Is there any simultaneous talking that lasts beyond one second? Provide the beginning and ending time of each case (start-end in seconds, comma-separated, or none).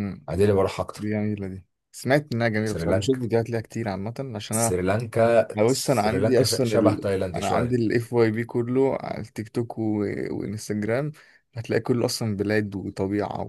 5.6-7.8